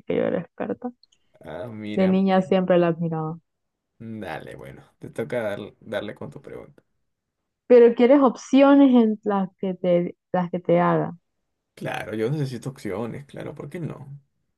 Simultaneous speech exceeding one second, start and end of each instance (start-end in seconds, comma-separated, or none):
none